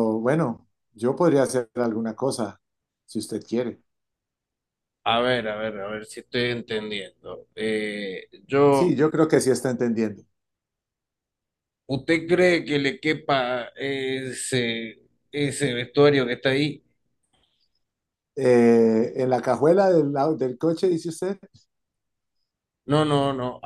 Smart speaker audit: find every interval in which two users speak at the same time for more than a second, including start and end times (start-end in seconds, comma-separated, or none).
none